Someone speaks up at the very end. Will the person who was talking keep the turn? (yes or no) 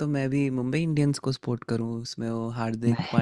yes